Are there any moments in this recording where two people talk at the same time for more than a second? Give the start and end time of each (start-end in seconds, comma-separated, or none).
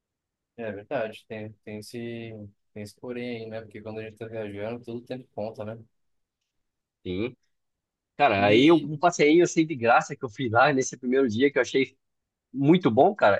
none